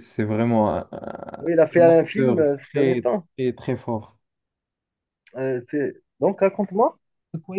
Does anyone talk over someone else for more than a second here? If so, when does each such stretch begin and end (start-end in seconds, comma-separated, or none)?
1.4-3.2